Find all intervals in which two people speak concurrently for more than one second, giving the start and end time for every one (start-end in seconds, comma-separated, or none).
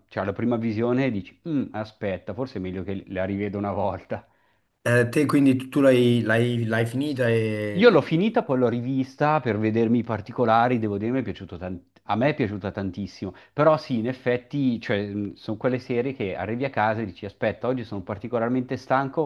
none